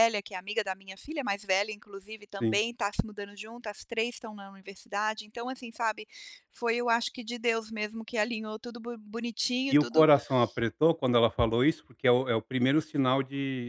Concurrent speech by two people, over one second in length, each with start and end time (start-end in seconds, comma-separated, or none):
none